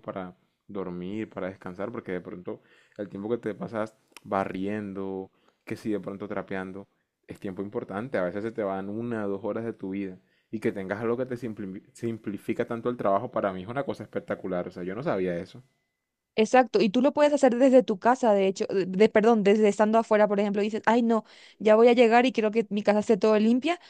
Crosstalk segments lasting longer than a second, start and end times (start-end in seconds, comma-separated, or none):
none